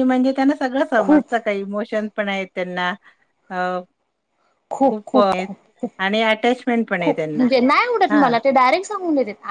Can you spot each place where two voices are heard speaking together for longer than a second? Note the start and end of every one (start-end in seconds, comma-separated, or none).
none